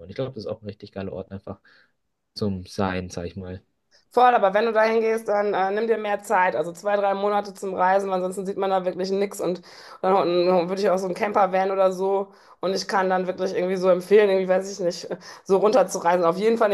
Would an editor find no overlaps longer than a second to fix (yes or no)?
yes